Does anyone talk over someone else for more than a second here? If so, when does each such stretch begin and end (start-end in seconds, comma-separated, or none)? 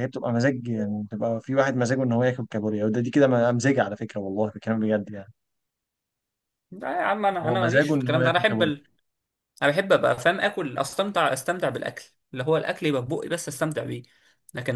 7.4-8.7